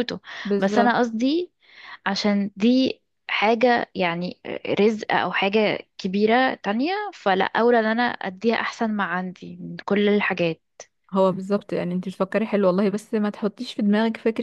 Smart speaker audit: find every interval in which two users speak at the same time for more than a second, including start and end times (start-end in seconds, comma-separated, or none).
none